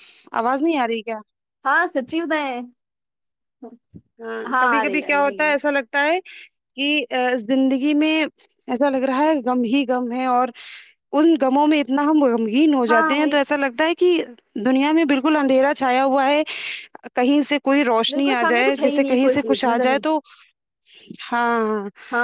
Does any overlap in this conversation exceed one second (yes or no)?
yes